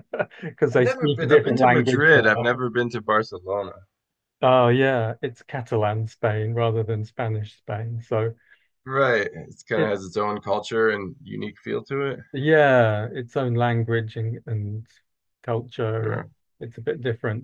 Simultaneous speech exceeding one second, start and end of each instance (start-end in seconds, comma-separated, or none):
0.7-2.4